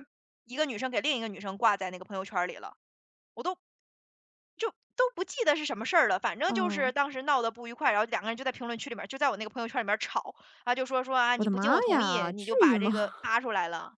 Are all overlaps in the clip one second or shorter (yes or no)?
no